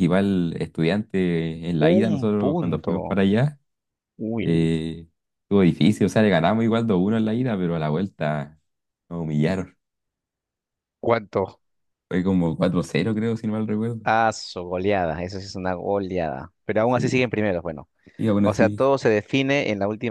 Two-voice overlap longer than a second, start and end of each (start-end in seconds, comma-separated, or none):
1.8-3.2